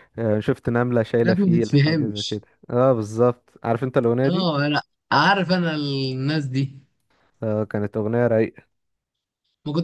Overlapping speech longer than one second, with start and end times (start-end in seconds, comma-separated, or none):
1.1-2.4